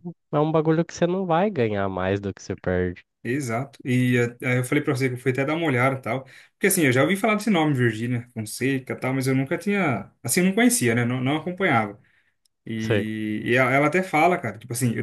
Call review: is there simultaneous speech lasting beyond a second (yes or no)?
no